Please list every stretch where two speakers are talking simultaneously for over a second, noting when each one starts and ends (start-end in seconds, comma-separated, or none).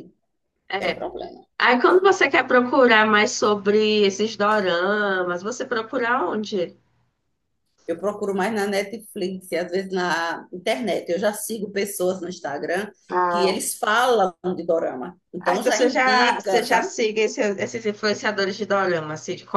15.4-16.9